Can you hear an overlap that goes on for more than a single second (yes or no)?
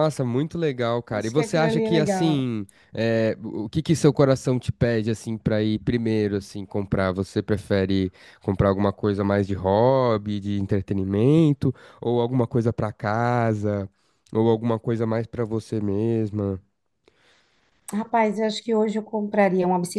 yes